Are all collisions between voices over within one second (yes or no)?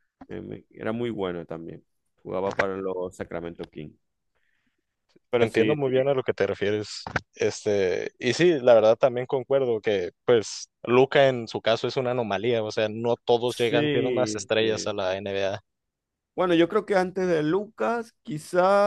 no